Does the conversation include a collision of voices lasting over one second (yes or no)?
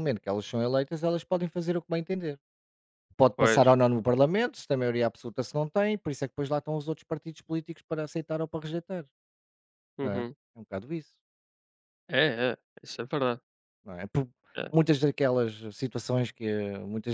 no